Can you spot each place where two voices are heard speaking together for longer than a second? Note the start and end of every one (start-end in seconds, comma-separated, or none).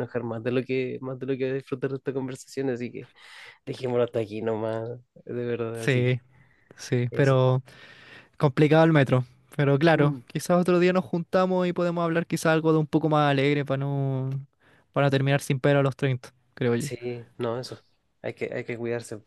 none